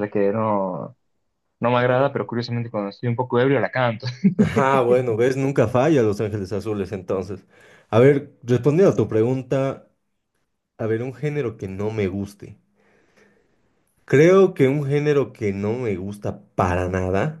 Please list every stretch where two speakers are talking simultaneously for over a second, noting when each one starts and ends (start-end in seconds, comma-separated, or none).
none